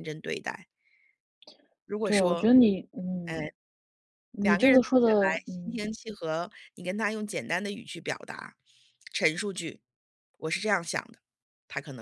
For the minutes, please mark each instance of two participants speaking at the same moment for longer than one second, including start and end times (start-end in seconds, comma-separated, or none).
4.4-5.8